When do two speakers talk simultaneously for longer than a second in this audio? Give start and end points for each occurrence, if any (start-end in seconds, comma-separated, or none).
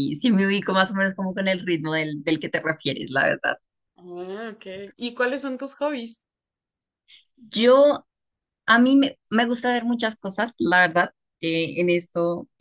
none